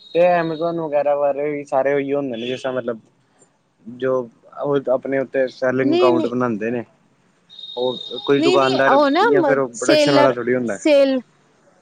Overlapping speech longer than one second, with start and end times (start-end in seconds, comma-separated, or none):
8.4-10.3